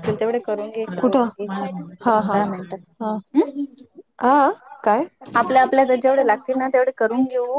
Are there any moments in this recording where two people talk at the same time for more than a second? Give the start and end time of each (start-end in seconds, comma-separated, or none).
1.0-2.4